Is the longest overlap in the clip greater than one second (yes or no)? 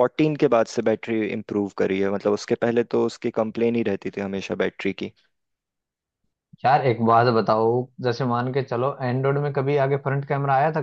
no